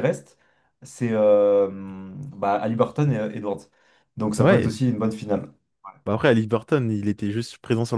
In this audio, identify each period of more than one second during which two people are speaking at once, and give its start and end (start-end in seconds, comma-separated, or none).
none